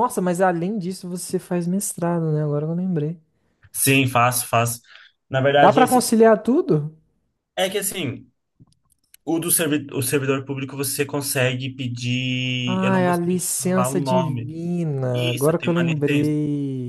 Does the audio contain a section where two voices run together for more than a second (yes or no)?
yes